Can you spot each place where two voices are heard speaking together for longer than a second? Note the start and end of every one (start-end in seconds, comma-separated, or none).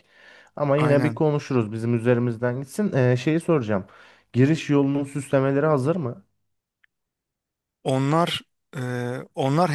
none